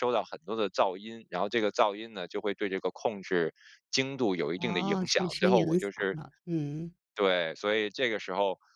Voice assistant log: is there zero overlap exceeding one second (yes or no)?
no